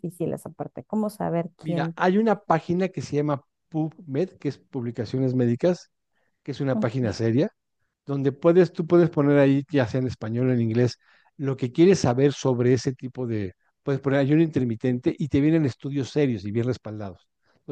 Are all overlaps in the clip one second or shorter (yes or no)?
yes